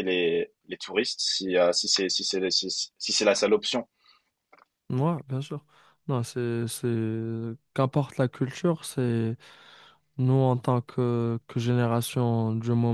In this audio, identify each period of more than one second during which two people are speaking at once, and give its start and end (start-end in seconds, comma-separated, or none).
none